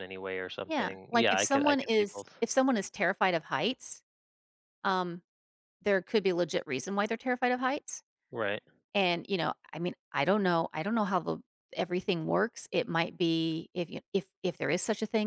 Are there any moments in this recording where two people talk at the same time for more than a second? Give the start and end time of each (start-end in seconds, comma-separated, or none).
0.7-2.3